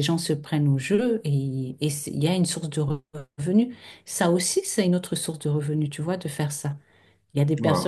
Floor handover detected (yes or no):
no